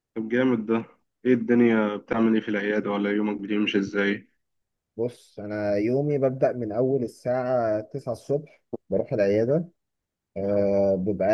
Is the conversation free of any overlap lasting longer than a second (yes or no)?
yes